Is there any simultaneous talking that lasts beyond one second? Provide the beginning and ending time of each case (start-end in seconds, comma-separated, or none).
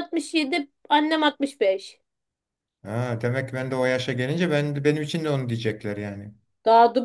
none